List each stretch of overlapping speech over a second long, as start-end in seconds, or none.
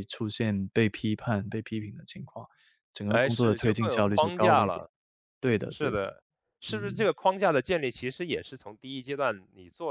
3.1-4.8